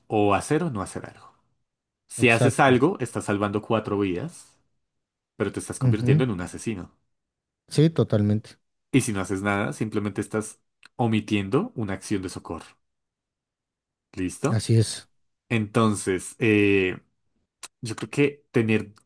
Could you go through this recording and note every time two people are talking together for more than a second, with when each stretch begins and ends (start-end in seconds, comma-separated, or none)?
none